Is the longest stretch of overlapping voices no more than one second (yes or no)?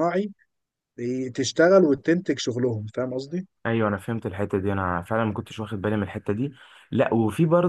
yes